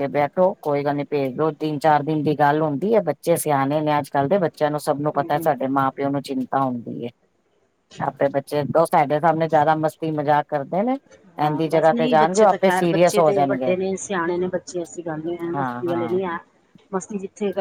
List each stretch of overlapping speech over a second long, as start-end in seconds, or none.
11.5-13.7